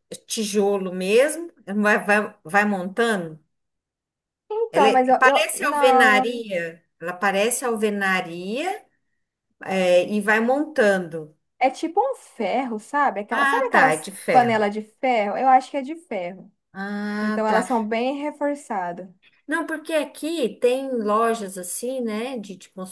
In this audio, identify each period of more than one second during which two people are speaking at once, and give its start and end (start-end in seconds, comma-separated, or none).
4.7-6.4, 13.3-14.7